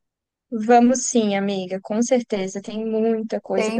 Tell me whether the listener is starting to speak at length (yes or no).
yes